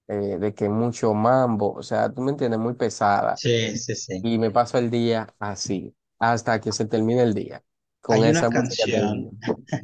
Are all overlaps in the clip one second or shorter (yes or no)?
no